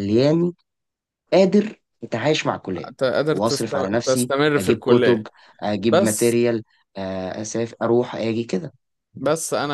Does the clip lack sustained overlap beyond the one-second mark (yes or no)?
no